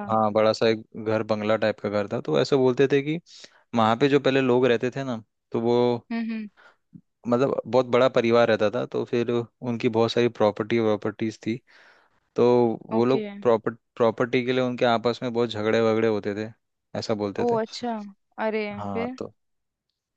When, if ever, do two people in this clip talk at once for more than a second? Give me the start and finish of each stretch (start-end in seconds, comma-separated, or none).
none